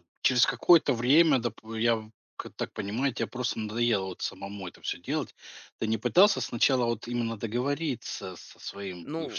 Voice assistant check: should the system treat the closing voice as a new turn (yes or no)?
no